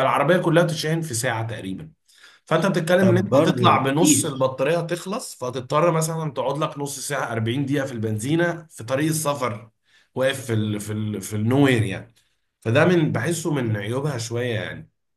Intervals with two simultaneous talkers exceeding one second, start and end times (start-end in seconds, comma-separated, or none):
3.0-4.5